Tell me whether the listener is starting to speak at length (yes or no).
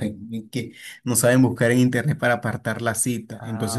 no